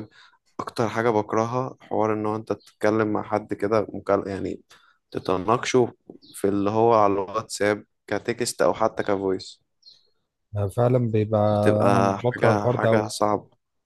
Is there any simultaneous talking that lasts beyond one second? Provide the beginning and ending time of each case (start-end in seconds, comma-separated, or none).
11.9-13.1